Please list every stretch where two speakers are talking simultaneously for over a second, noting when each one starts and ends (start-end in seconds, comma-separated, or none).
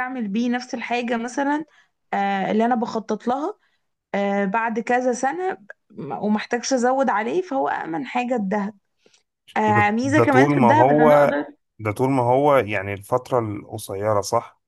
9.7-11.4